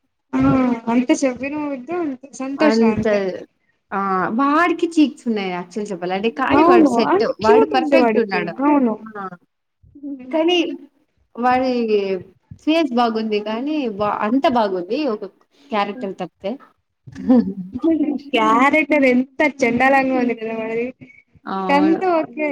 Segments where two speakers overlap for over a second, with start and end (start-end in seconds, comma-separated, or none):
6.6-8.5